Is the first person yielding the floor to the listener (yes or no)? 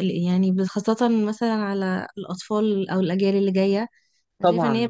no